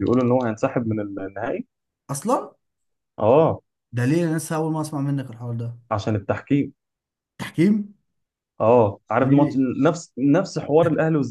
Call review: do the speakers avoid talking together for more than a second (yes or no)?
yes